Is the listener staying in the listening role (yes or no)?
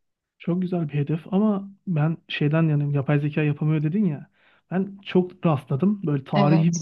yes